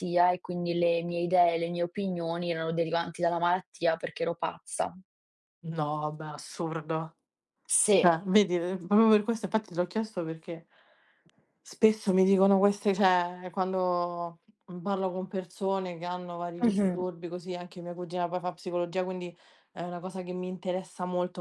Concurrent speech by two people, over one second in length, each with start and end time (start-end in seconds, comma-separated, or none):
none